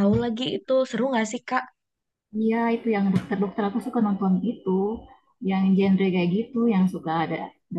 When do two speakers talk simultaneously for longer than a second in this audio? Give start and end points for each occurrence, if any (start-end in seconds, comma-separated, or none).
none